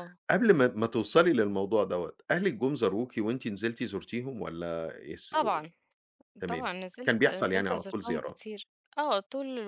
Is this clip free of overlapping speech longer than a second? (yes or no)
no